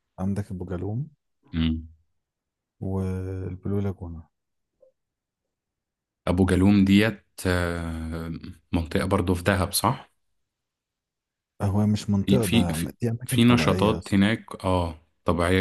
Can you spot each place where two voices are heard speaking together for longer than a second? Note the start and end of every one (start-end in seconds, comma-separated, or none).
12.2-14.3